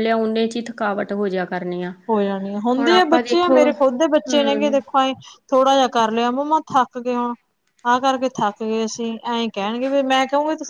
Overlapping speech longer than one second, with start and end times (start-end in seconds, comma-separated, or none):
2.8-4.7